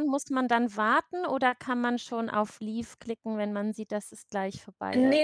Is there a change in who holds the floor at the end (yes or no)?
yes